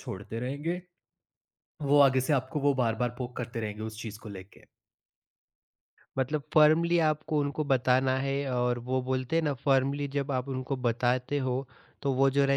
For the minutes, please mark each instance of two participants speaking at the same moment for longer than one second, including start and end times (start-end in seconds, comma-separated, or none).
none